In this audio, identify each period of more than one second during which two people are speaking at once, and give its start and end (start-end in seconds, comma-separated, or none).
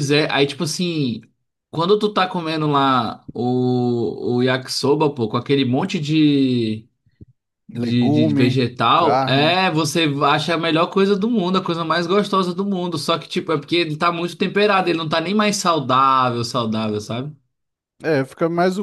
7.7-9.6